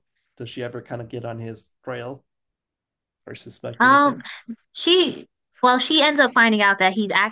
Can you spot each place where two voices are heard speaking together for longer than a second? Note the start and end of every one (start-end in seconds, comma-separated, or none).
none